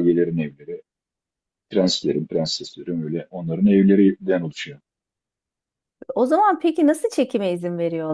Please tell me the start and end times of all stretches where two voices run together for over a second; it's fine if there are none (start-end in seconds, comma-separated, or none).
none